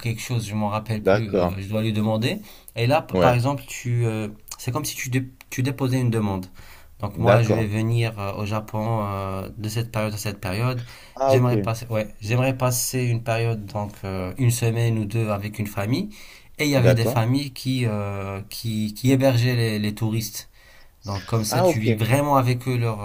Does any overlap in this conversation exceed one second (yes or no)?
no